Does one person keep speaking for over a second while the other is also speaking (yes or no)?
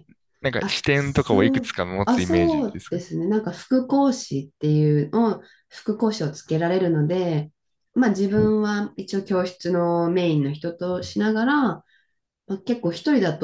yes